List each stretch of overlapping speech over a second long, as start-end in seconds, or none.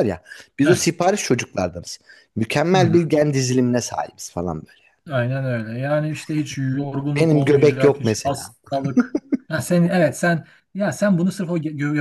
7.2-8.4